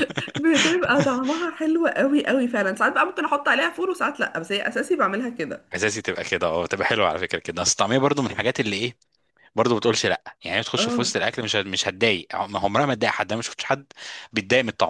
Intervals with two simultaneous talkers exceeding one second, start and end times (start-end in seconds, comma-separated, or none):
none